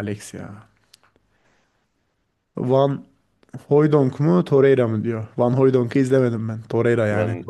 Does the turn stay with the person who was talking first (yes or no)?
no